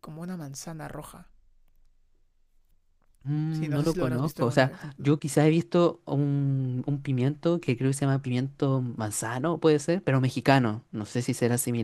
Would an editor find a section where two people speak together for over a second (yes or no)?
yes